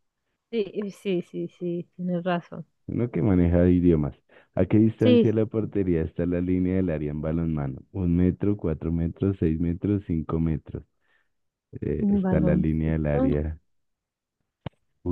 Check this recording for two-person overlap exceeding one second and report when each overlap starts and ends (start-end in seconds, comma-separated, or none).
12.0-13.3